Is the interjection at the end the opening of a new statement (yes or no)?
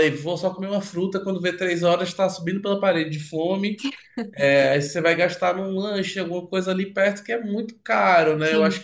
no